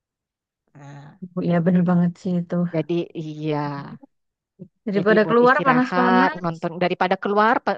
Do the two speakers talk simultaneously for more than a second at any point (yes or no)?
yes